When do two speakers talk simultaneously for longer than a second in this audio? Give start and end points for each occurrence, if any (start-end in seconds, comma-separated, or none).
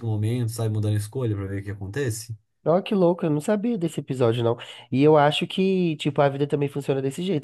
none